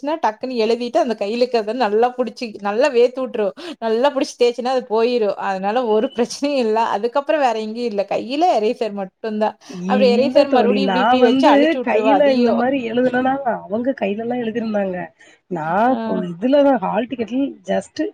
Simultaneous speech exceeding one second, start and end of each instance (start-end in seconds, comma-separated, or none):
none